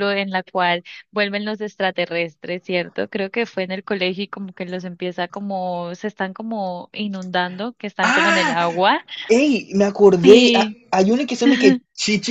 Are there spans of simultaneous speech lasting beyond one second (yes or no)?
no